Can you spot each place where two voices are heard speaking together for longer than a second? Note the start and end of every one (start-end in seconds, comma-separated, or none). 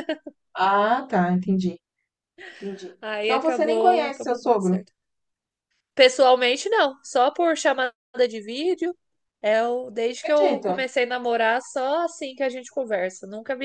3.0-4.8